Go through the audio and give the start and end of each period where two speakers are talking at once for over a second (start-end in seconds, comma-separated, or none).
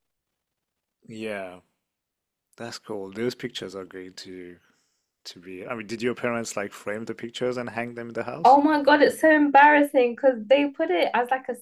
none